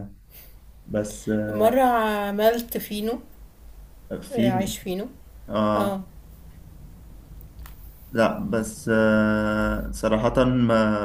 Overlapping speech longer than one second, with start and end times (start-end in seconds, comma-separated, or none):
none